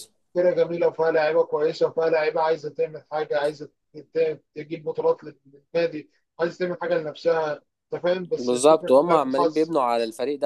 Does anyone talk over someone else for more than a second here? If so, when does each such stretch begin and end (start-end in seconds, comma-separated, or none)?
8.4-9.7